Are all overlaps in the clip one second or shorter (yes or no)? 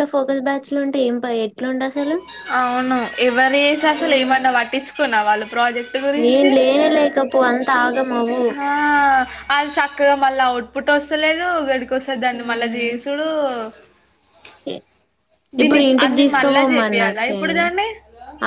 no